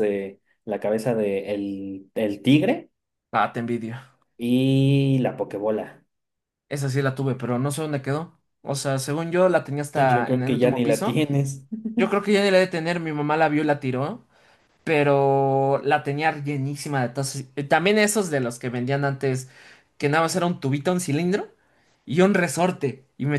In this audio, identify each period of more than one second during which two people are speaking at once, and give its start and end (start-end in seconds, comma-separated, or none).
9.9-11.2